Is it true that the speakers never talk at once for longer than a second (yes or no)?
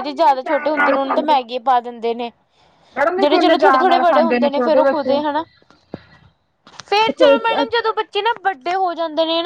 no